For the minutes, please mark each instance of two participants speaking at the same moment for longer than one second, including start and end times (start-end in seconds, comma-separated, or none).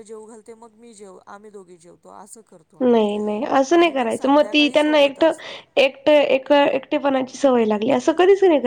3.8-5.2